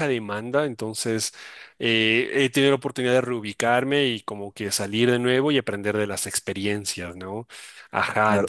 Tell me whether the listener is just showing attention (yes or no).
no